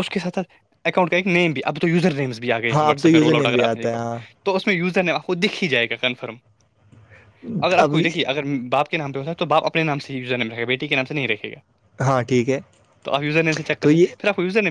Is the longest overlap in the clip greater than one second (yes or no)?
yes